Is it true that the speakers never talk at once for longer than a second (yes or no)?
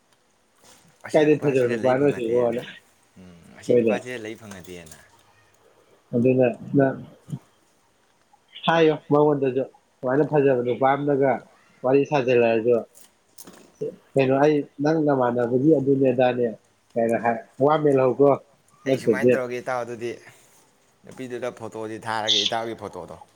no